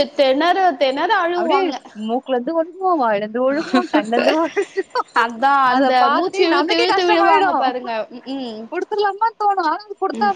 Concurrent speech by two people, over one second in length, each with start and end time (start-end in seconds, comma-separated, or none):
5.7-7.6